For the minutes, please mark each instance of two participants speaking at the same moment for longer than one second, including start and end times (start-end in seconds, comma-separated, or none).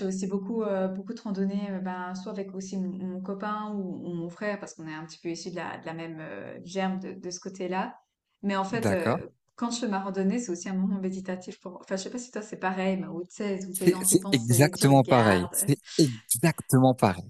13.7-15.5